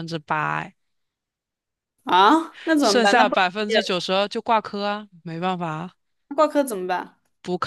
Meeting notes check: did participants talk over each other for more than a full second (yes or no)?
yes